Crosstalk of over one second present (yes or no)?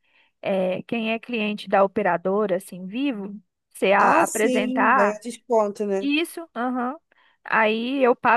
yes